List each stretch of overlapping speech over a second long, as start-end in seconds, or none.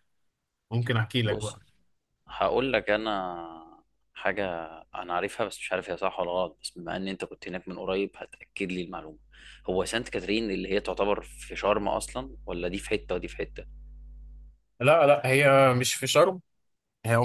none